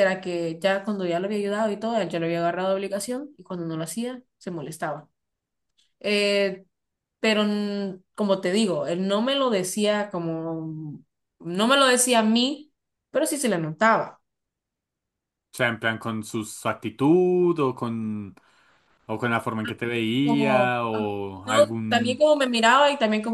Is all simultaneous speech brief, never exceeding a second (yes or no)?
no